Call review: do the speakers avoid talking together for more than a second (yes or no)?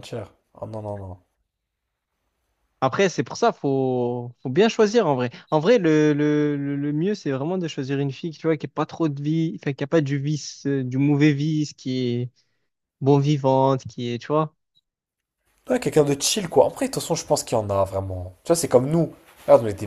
yes